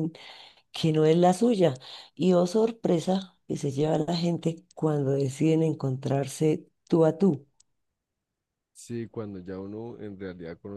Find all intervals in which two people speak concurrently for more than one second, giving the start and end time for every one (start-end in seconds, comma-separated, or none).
none